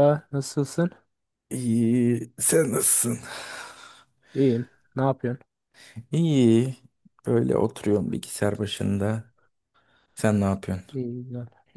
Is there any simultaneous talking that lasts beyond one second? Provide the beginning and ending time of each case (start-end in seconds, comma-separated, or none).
none